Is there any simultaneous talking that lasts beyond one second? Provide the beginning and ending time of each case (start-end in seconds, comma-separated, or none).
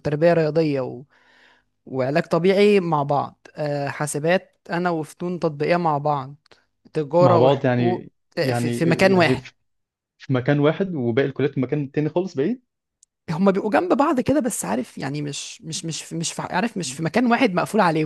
7.2-9.4